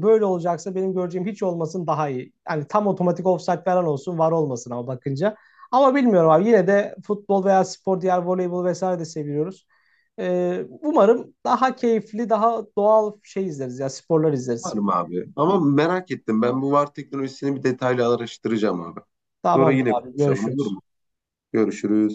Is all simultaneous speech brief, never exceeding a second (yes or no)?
no